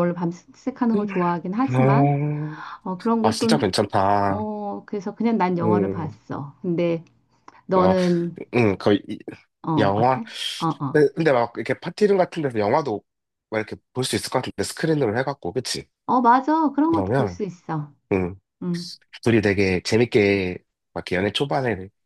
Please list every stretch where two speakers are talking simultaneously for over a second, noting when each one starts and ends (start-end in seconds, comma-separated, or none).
none